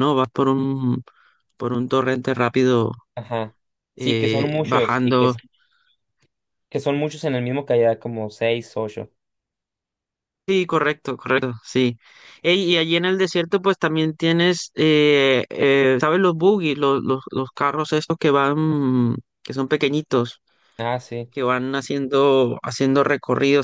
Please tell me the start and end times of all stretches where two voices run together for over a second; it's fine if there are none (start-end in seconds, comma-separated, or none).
4.0-5.3